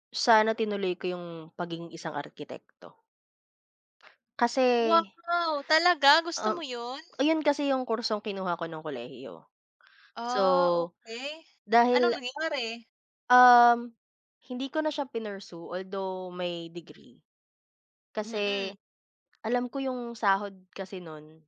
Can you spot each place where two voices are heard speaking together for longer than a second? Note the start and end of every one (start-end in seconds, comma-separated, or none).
none